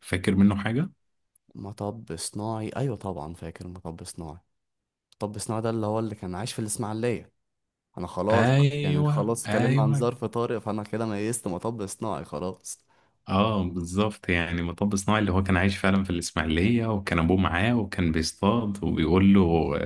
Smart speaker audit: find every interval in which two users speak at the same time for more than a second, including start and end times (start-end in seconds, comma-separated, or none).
8.3-10.1